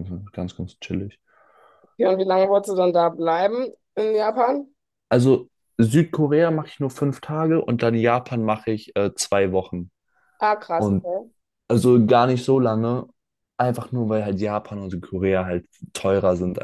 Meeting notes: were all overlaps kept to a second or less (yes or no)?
yes